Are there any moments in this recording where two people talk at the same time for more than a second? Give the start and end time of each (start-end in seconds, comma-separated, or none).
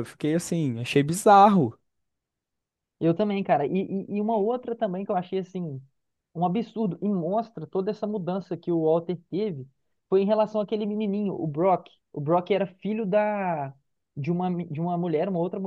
none